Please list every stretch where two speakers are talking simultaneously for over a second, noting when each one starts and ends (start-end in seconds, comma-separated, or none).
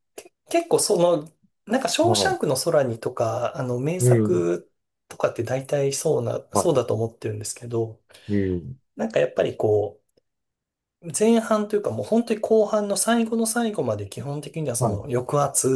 none